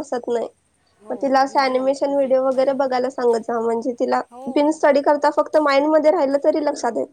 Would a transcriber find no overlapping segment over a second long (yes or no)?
no